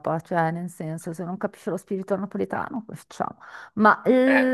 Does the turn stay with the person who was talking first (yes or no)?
yes